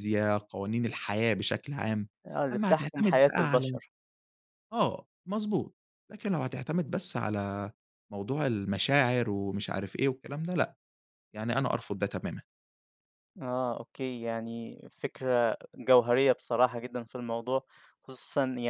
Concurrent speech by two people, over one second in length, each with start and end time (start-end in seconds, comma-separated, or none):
2.5-3.8